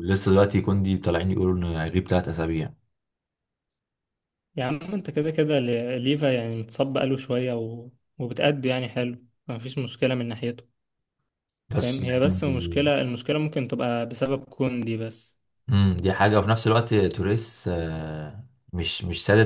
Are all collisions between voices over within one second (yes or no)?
no